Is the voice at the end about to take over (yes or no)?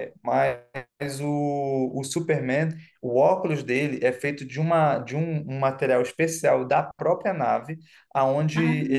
no